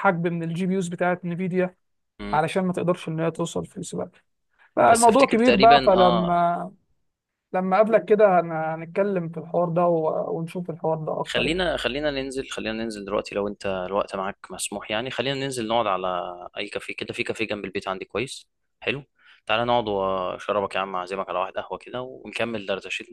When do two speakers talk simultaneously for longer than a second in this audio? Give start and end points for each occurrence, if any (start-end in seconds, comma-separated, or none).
4.9-6.4